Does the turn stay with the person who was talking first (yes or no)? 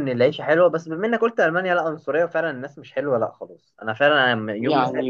no